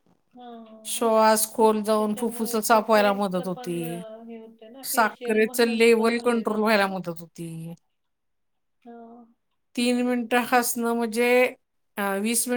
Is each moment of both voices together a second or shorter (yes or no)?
no